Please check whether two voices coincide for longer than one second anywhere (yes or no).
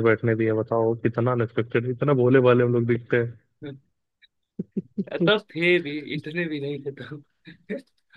no